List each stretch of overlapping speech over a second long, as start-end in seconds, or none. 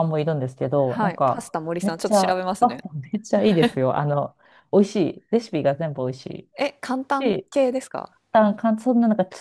0.9-2.8